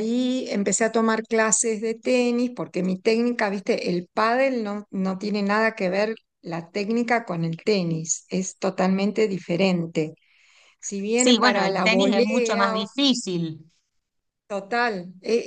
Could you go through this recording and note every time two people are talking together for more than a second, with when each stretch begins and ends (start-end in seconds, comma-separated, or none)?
11.2-12.9